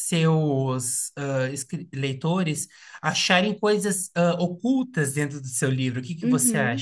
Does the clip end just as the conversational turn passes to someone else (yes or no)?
yes